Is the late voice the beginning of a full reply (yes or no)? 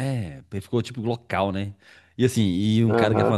no